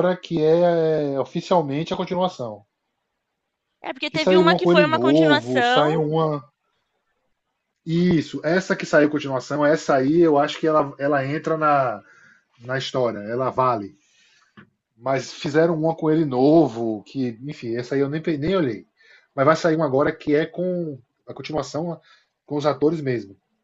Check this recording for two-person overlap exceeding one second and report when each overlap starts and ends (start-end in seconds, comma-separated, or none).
4.1-5.7